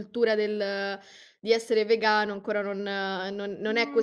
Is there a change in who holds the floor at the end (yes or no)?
yes